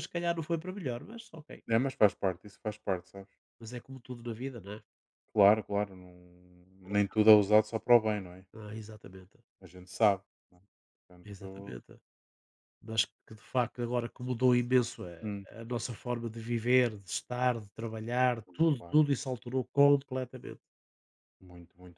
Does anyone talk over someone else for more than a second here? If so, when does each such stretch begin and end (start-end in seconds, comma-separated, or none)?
none